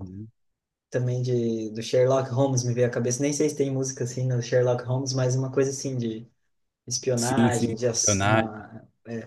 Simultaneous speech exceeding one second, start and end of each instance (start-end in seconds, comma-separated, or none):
7.2-8.5